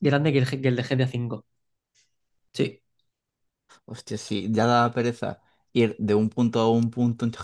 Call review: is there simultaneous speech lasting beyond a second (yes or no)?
no